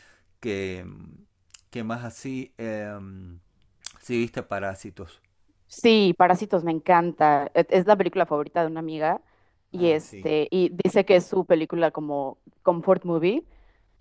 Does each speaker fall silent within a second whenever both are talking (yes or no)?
yes